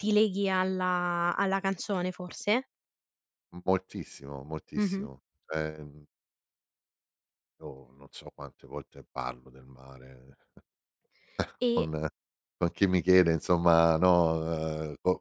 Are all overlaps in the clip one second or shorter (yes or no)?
yes